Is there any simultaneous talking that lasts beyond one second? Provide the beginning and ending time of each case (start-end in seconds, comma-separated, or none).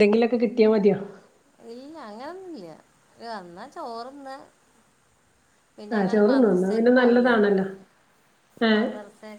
6.0-7.3